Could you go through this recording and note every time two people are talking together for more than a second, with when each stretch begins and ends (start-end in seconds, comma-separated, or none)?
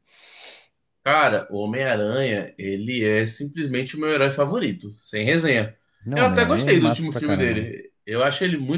6.1-7.7